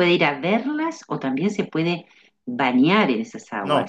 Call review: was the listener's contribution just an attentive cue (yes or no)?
no